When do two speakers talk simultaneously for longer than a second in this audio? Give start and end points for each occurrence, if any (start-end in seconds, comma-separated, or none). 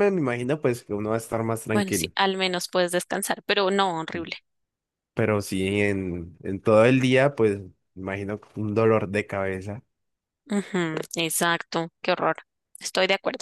none